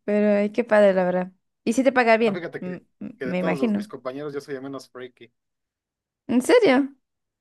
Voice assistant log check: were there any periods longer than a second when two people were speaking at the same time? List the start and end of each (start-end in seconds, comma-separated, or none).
2.2-3.9